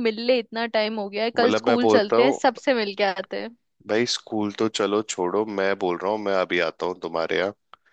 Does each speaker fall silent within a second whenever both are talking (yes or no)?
no